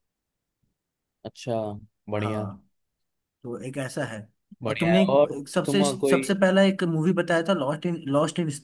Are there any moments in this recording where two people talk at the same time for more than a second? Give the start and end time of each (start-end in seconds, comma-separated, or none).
4.7-6.2